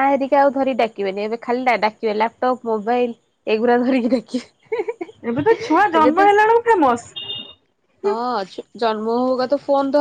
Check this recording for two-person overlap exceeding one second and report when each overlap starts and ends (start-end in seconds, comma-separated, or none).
none